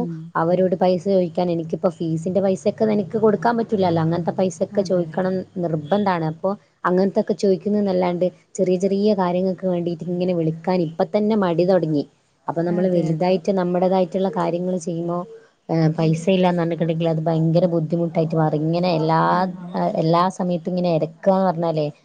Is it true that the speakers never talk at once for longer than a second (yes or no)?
yes